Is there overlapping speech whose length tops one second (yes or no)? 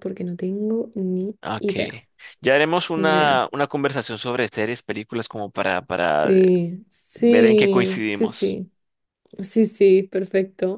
yes